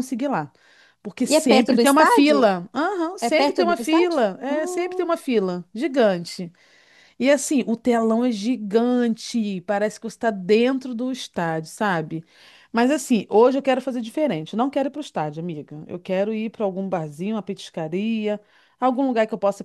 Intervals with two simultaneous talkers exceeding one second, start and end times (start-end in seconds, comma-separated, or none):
1.3-2.5, 3.2-5.1